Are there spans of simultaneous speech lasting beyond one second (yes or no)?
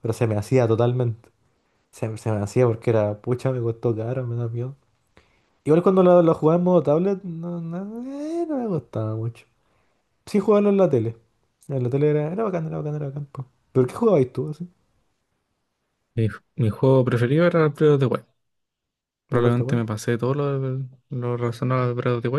no